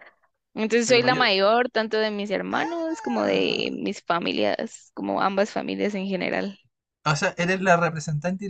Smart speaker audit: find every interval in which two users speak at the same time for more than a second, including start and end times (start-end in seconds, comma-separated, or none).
2.5-3.8